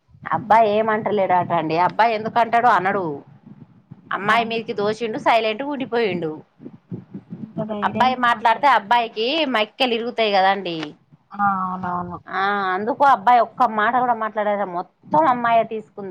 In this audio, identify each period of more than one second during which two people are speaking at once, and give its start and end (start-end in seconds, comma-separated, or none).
7.9-9.3